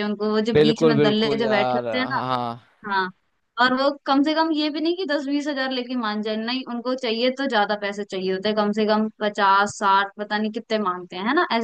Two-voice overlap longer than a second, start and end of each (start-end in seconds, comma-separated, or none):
0.5-2.2